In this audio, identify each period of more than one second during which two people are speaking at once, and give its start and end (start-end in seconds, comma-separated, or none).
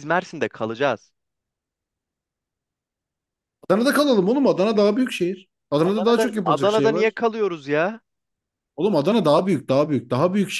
5.8-7.2